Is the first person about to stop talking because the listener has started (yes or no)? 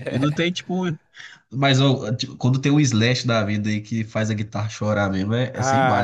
yes